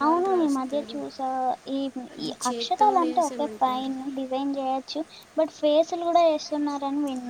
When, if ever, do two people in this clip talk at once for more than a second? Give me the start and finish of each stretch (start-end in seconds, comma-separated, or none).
2.3-3.9